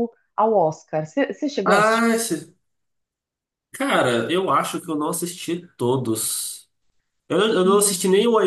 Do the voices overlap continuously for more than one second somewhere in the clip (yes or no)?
no